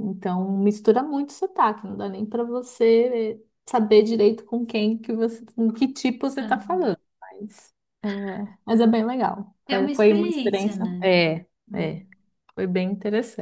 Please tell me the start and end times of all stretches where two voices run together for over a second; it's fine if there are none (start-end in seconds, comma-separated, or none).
9.7-11.1